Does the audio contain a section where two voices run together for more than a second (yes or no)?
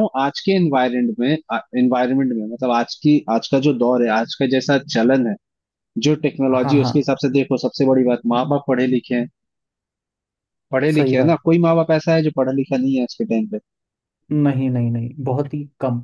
no